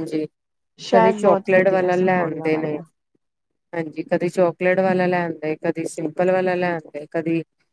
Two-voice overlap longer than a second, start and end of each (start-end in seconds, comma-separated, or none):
0.9-2.8